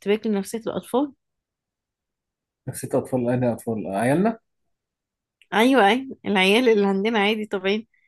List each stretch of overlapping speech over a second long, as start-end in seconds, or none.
none